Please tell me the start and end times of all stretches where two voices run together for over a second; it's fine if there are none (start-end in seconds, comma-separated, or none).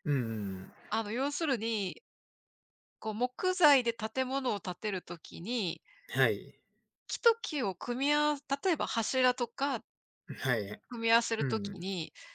none